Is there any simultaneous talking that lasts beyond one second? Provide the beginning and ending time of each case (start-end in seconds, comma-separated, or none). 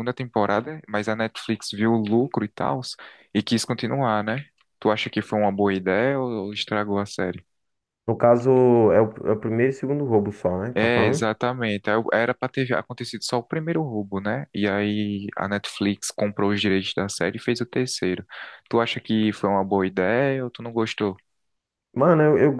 none